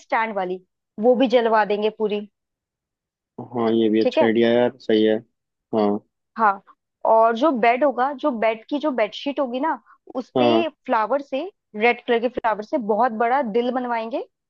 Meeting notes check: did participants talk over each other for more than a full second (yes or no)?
no